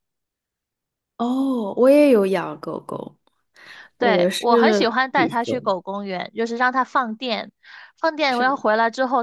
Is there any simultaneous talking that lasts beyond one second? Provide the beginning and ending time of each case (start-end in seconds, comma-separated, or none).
4.0-5.7